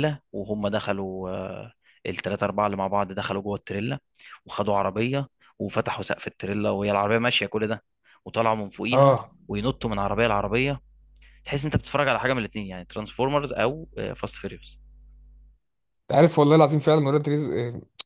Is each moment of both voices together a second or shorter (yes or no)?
yes